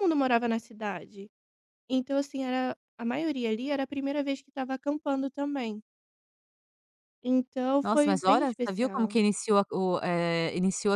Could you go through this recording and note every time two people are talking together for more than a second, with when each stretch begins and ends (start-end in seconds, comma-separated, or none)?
7.8-9.2